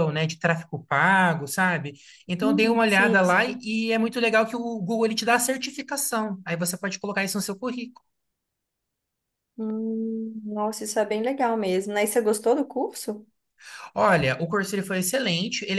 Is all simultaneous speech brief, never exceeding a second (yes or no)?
no